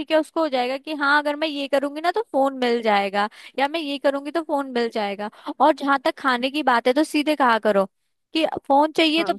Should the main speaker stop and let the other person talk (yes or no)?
no